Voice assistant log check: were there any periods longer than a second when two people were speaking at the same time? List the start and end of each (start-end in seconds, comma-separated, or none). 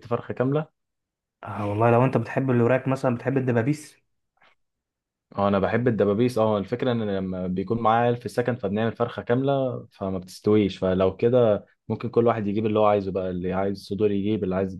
none